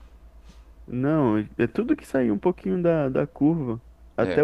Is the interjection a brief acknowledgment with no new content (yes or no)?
yes